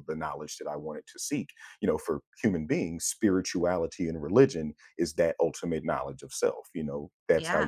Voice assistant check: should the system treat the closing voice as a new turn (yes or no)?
no